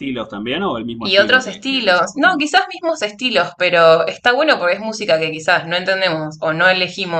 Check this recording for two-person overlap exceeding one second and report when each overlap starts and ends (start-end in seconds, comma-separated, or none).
1.0-2.5